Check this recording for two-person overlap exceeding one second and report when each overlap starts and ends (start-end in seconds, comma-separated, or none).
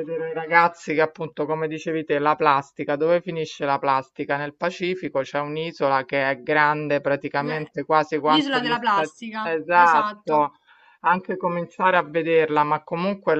8.2-10.5